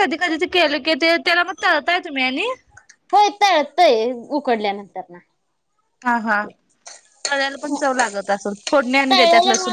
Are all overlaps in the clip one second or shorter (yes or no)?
yes